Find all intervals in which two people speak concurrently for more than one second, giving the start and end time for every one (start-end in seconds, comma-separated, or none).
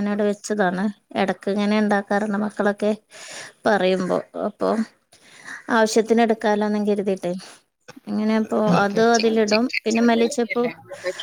8.7-10.7